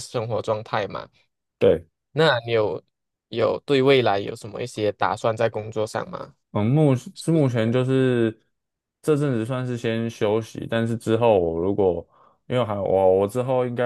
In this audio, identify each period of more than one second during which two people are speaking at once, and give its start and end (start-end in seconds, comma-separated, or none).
none